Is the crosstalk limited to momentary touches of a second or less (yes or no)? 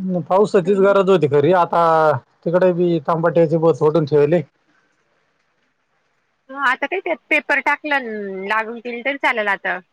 yes